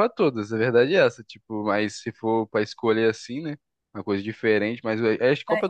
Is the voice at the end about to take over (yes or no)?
no